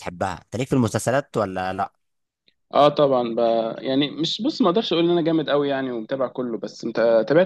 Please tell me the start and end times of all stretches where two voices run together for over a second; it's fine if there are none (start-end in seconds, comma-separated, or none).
none